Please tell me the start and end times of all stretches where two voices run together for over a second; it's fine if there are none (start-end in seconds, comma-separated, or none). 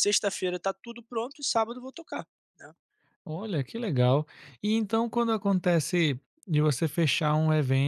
none